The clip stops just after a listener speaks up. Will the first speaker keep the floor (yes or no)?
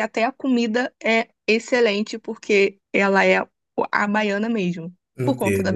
no